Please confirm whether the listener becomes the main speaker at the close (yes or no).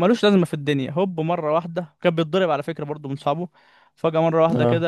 no